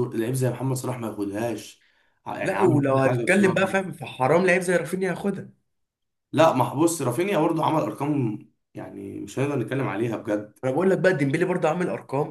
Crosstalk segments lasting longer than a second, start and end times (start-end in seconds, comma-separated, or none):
2.4-3.8